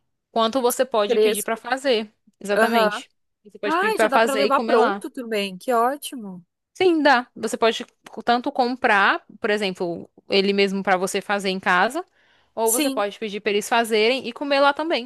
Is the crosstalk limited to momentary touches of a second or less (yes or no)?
no